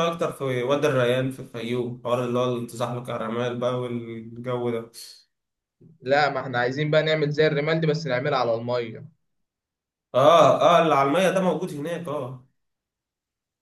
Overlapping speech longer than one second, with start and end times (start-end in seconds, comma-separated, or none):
none